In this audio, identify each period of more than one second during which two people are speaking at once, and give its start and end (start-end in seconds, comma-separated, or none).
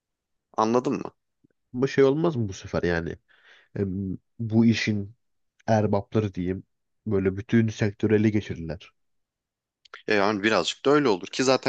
none